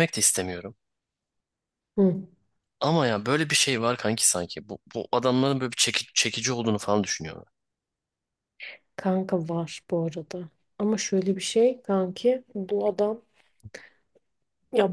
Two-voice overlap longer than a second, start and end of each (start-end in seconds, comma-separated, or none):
none